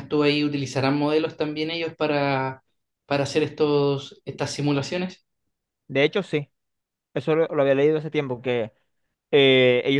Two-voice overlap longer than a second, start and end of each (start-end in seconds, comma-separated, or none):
none